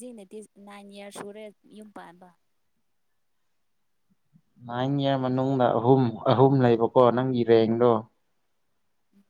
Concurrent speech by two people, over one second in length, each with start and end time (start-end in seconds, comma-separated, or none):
none